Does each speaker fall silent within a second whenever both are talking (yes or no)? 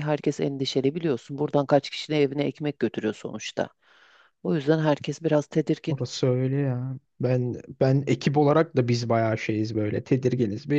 yes